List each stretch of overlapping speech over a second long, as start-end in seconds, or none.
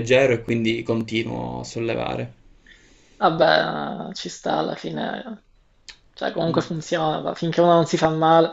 none